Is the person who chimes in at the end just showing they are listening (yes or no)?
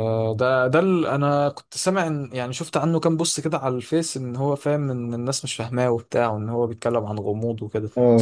no